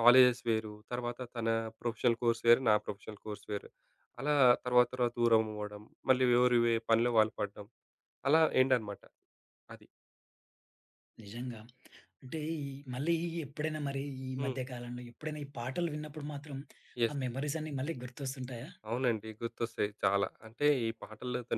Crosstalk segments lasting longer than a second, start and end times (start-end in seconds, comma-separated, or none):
none